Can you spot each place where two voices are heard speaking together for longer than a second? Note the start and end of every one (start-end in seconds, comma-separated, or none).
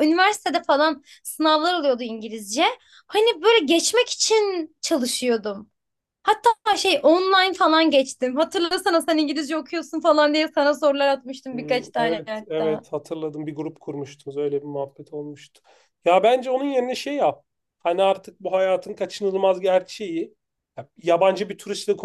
11.5-12.8